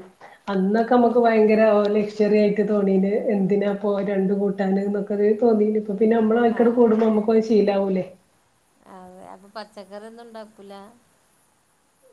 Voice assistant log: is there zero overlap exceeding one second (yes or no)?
yes